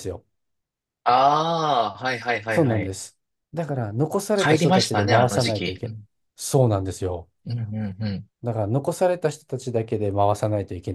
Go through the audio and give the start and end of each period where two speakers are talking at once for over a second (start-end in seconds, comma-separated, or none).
4.3-5.8